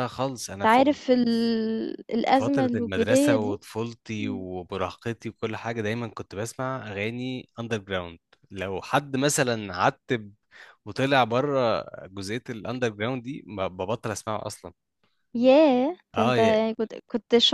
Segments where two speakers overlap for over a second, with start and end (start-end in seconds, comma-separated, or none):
2.3-3.6